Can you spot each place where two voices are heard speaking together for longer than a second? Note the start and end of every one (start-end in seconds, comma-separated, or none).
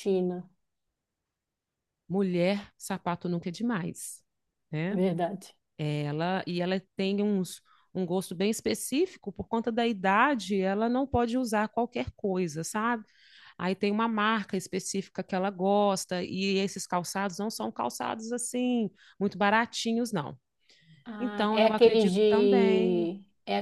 21.2-23.1